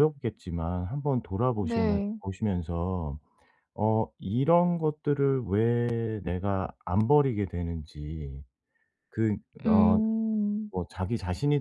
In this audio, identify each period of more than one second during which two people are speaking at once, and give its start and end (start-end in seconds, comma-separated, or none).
none